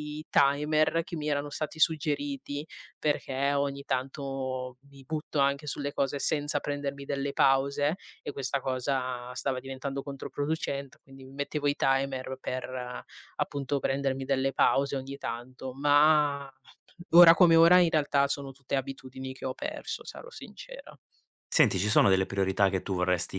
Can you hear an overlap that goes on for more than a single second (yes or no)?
no